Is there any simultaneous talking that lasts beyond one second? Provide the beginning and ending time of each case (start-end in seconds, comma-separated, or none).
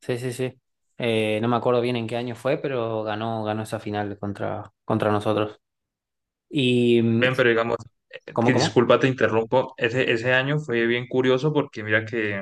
none